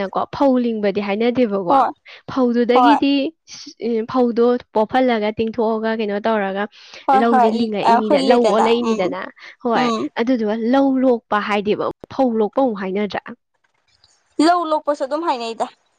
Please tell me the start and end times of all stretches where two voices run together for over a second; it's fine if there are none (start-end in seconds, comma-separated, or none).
7.2-9.0